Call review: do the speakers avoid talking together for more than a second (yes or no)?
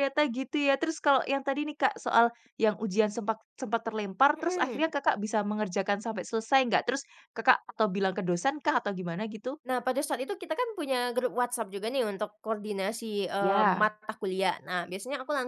yes